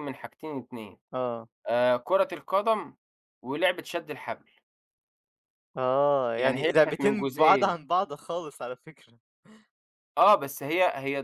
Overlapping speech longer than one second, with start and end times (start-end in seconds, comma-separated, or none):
6.4-7.8